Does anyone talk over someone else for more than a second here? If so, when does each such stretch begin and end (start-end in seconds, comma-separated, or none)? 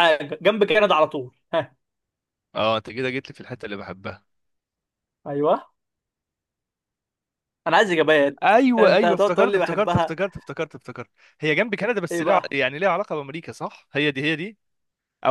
8.4-10.2